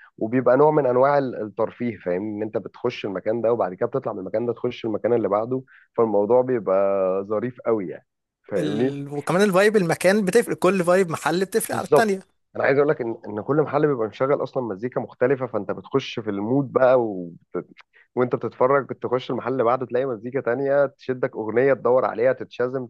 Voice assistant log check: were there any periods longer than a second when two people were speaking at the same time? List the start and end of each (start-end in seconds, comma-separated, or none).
none